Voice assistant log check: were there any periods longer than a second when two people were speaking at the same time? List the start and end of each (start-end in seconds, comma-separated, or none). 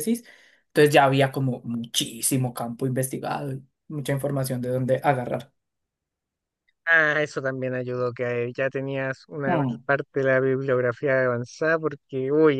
none